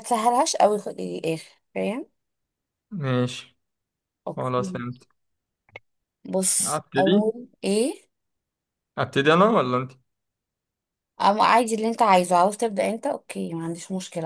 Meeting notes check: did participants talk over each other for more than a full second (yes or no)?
no